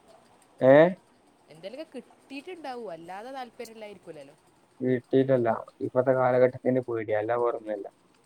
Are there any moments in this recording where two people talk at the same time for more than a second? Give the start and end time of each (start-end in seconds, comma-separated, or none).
none